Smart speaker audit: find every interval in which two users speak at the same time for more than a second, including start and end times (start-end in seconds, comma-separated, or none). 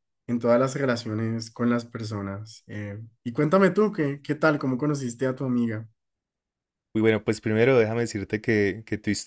none